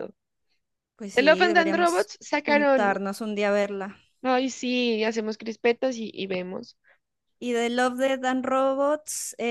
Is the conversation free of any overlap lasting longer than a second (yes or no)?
no